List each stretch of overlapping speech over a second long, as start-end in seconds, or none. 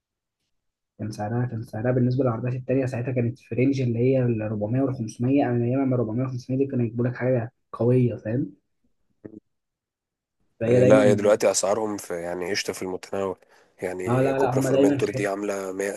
14.1-15.3